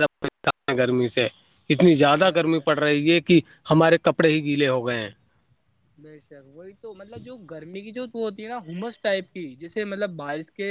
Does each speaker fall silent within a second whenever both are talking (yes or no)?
yes